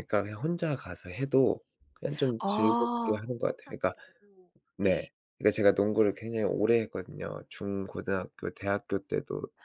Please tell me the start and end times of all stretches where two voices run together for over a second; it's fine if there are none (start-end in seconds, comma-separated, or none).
2.4-3.9